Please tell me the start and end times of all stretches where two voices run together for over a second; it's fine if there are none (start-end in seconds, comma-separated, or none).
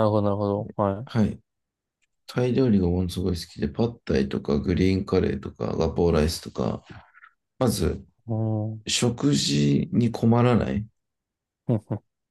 none